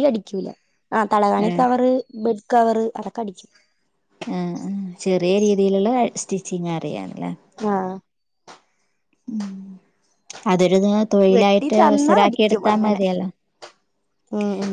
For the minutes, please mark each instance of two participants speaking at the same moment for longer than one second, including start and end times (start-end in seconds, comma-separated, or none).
11.4-13.0